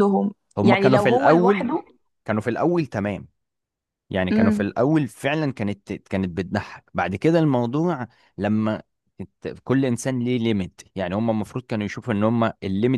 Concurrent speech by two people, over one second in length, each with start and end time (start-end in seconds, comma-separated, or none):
0.6-1.8